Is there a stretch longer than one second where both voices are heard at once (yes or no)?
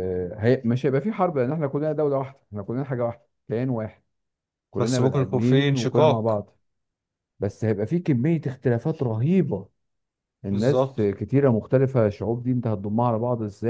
yes